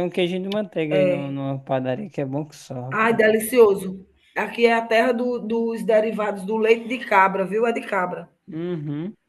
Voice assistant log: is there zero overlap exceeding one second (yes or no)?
yes